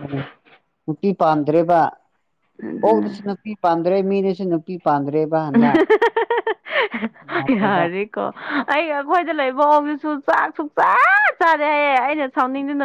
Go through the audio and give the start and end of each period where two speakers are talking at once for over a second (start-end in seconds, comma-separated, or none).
none